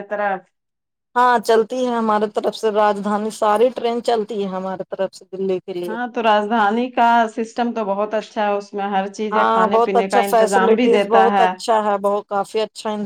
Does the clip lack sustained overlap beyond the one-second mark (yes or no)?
no